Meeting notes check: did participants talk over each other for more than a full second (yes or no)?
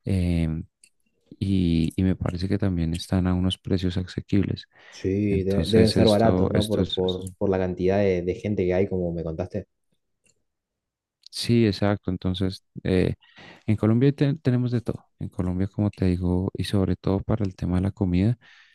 yes